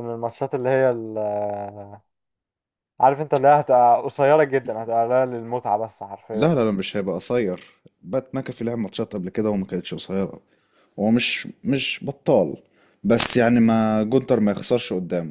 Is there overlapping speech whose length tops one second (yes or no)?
no